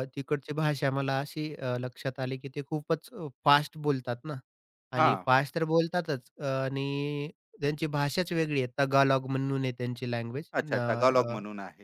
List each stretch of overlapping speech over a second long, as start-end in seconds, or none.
none